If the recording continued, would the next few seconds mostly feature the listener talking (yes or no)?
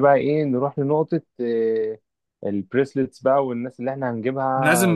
yes